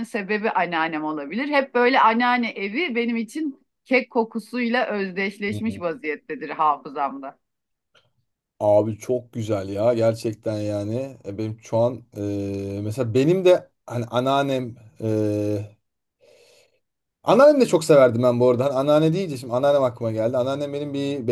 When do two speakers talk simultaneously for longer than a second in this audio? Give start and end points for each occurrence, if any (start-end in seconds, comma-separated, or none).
none